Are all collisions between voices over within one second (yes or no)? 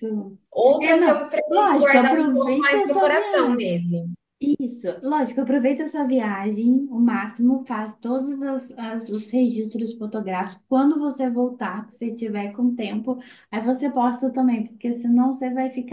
no